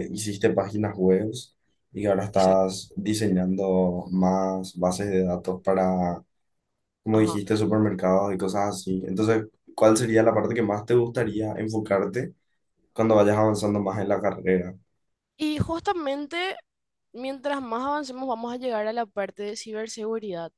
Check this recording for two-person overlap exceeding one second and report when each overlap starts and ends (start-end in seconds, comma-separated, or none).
none